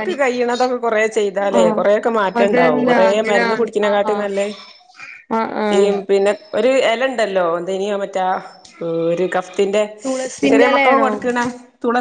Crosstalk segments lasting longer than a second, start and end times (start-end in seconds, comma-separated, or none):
2.4-4.3